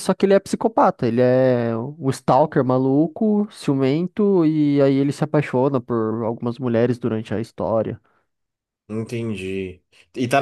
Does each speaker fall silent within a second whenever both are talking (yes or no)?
yes